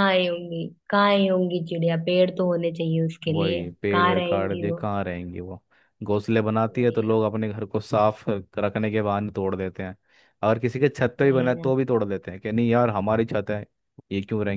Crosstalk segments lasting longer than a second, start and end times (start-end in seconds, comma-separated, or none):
3.3-4.9